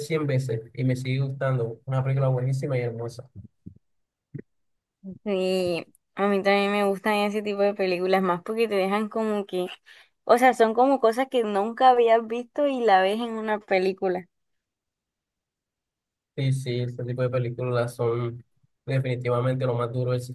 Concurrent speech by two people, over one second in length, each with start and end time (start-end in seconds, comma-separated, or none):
none